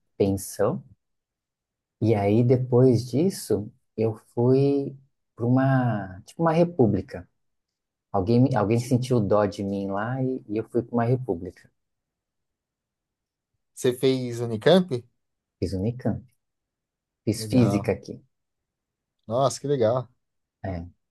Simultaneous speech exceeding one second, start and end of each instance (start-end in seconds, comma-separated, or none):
none